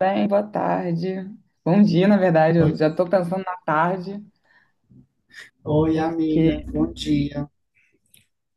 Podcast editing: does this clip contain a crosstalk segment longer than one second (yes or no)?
no